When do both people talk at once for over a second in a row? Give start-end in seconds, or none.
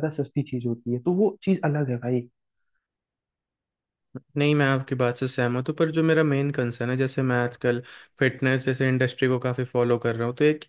none